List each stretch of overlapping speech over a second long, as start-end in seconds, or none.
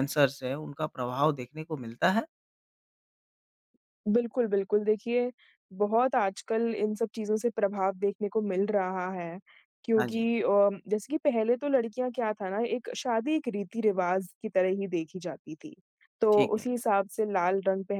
none